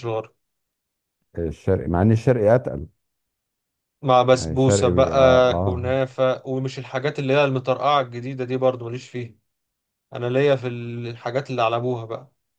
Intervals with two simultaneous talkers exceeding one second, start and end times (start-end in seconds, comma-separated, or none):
4.3-6.0